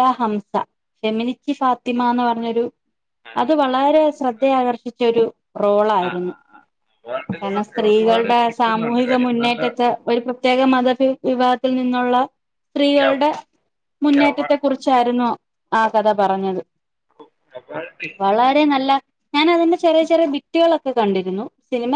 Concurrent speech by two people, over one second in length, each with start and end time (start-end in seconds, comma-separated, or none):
7.7-9.6